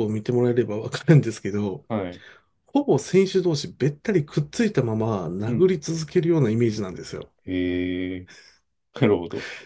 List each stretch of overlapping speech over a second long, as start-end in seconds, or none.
none